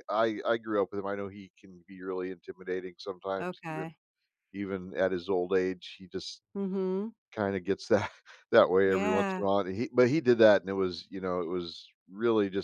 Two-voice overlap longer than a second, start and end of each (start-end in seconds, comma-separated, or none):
none